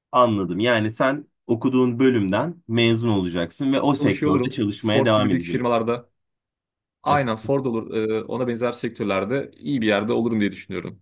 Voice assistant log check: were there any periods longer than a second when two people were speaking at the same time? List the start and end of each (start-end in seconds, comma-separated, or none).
4.0-5.8